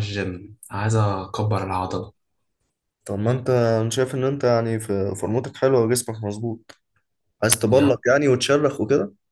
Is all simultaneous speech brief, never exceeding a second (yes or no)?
yes